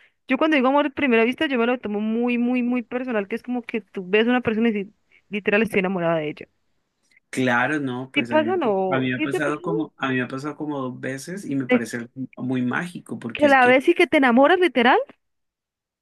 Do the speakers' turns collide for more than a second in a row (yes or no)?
yes